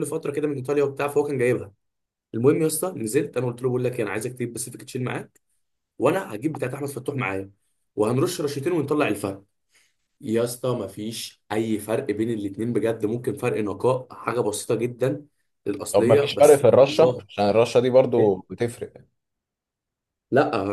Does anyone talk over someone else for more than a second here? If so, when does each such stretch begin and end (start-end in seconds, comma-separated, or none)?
15.9-17.2